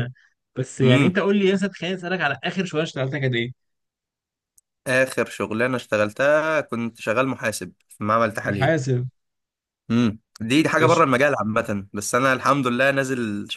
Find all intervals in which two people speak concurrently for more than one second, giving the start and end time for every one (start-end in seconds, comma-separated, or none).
none